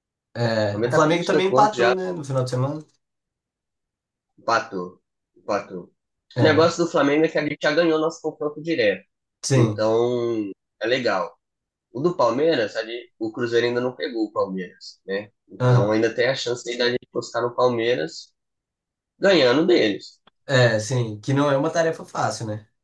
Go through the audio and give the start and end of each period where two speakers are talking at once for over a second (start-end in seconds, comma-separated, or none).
0.7-1.9